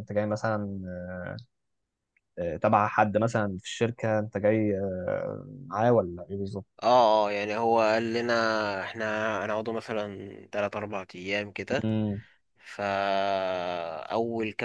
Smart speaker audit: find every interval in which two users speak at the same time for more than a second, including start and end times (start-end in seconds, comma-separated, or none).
none